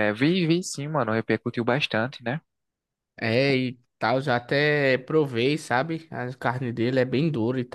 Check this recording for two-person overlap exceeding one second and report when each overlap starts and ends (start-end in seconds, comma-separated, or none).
none